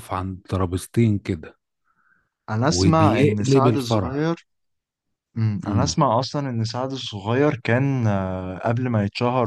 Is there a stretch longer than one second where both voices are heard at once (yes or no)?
yes